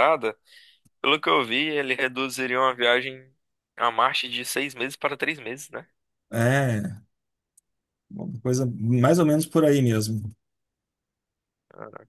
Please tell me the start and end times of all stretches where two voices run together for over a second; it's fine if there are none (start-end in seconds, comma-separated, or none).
none